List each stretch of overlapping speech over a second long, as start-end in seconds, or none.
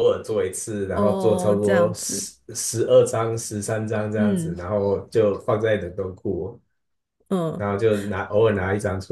0.9-2.3